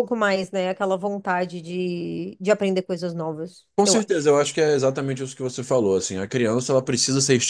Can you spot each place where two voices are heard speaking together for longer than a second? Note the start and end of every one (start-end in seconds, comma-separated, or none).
none